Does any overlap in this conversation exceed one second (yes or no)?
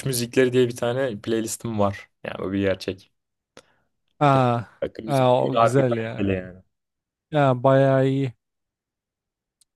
yes